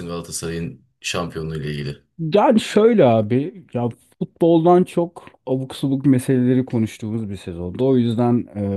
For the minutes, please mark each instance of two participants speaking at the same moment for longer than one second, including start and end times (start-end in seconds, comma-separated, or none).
none